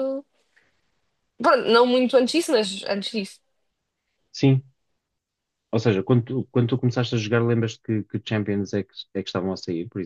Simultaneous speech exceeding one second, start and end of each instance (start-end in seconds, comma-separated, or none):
none